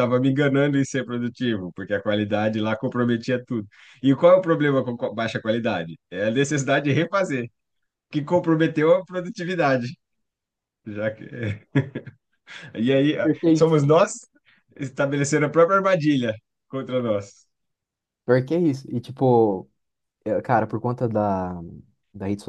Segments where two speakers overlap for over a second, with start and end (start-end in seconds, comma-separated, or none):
none